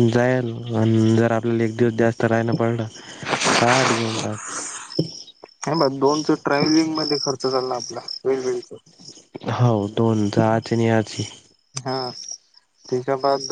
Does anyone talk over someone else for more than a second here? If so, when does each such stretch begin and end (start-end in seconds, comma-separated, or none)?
none